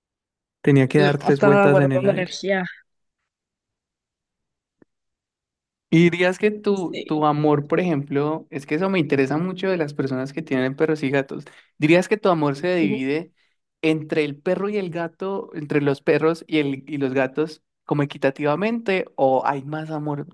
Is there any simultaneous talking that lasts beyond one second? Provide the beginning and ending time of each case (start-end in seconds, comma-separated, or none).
0.9-2.5